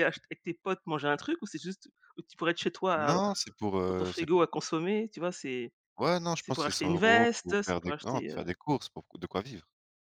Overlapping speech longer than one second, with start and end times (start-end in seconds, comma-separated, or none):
6.4-8.4